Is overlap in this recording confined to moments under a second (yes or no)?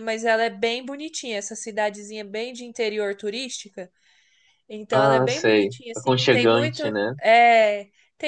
no